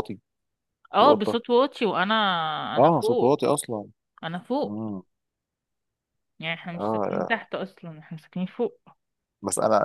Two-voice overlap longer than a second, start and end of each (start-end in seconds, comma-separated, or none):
none